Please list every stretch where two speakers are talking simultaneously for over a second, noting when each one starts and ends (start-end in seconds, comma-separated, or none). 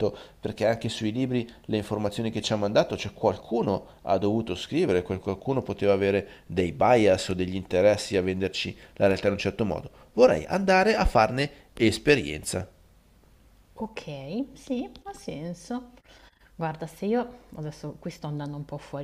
none